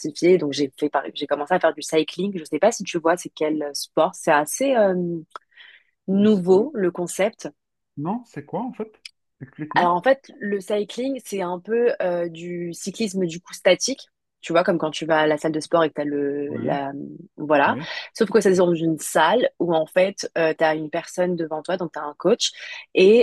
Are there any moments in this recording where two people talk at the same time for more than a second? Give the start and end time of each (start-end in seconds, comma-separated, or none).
none